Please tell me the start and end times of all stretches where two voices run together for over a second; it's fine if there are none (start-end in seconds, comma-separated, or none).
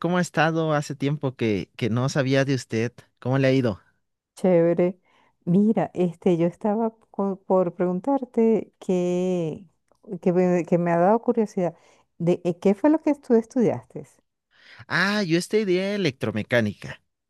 none